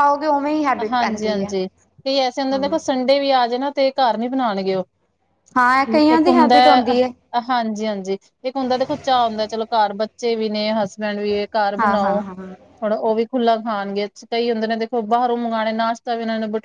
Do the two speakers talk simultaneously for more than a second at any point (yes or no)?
no